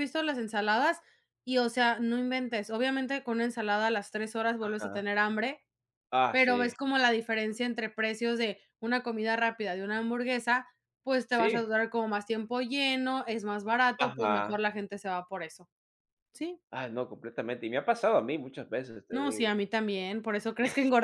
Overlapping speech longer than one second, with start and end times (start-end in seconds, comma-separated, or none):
none